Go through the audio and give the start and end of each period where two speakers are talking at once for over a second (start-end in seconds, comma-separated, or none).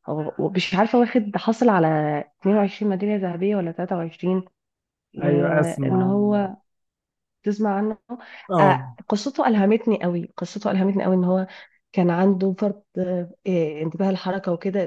5.2-6.5